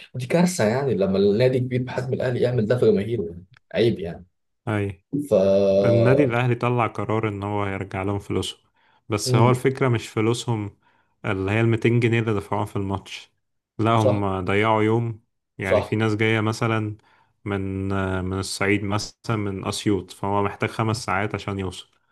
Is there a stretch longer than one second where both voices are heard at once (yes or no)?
no